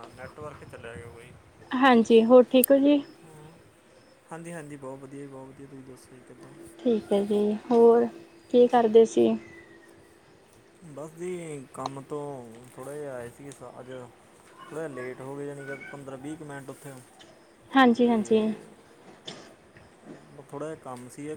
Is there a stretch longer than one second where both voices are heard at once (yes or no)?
no